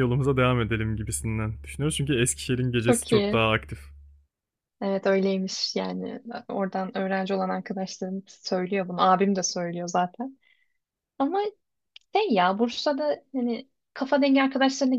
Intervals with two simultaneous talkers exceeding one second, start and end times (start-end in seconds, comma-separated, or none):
none